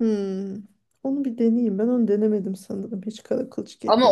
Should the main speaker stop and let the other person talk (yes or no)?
yes